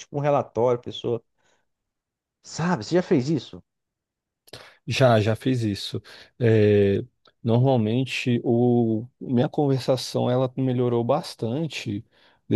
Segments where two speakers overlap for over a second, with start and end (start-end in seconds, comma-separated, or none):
none